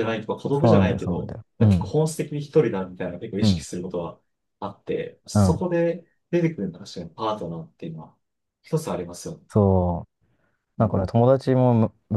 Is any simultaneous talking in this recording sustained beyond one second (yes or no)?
yes